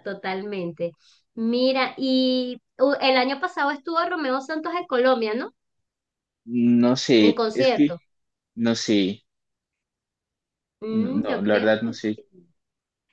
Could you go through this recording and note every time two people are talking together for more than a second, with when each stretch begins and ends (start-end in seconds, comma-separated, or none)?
10.9-12.2